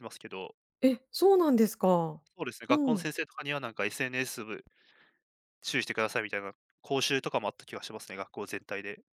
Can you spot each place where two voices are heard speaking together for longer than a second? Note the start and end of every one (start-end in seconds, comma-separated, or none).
none